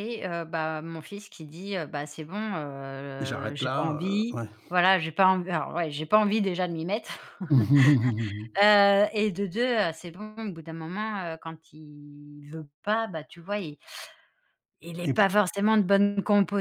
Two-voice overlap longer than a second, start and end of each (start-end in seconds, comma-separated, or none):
3.2-4.5